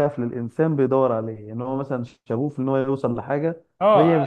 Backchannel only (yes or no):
no